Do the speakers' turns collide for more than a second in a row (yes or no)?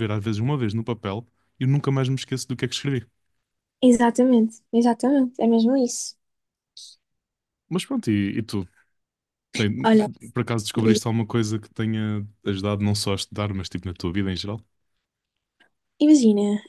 no